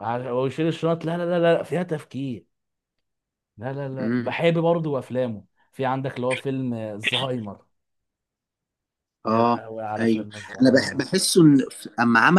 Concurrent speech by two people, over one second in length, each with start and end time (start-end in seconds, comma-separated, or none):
9.2-11.0